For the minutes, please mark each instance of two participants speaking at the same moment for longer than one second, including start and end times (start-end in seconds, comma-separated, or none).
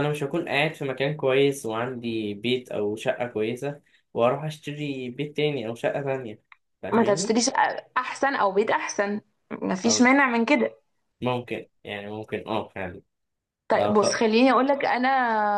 none